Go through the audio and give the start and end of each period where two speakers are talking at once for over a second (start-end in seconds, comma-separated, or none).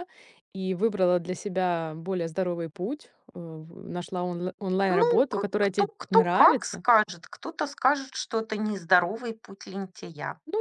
4.9-6.8